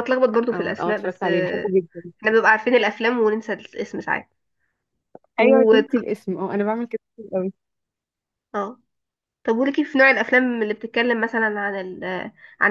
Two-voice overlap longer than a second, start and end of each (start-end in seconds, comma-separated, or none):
0.5-1.7